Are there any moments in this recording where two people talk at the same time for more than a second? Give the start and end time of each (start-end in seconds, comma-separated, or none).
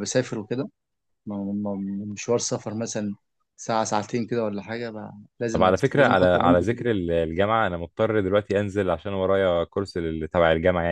5.5-6.9